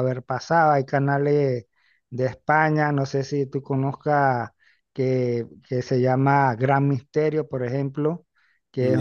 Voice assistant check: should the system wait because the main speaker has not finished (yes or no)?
yes